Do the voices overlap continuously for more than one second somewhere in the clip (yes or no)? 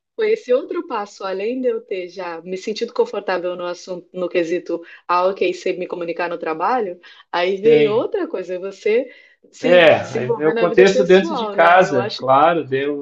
yes